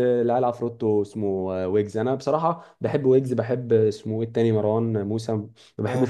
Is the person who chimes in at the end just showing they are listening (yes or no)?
yes